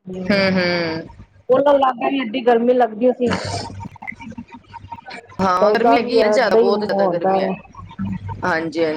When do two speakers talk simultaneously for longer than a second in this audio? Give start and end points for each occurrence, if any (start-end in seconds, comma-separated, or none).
5.6-7.5